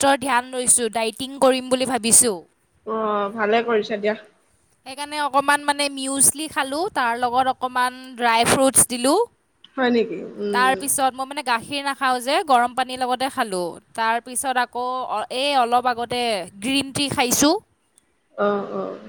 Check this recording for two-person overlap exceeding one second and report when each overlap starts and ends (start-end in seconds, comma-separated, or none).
none